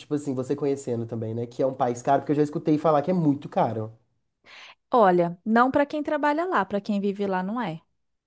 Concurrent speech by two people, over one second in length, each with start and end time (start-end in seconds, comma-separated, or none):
none